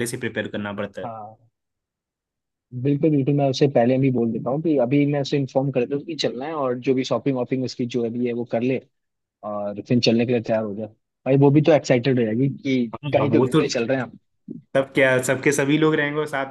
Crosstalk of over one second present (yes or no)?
no